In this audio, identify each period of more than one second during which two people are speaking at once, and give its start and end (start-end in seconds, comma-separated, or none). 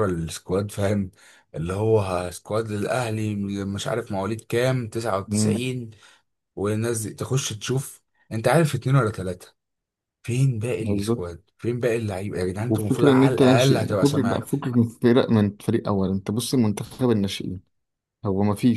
12.7-14.4